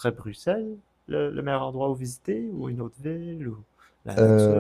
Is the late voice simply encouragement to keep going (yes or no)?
no